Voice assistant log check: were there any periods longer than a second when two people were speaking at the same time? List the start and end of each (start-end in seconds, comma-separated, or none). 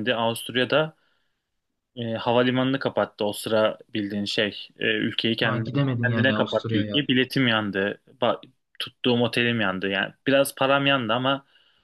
5.4-7.0